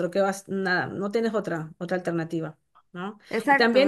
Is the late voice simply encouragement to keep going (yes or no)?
yes